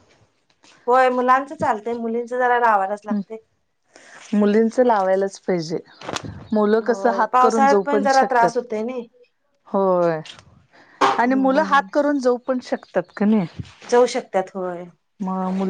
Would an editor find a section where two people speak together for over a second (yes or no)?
yes